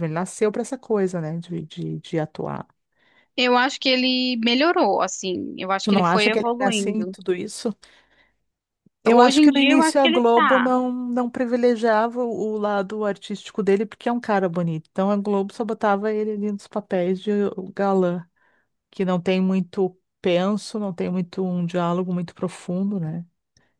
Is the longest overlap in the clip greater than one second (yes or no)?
yes